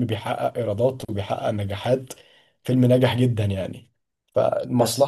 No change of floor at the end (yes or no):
yes